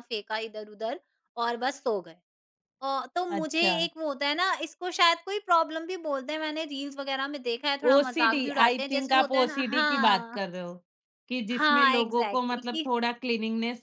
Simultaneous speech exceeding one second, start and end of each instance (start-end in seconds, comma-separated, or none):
7.9-10.4, 11.6-12.9